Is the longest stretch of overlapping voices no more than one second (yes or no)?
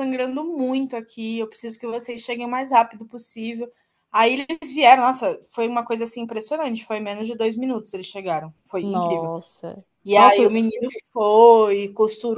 yes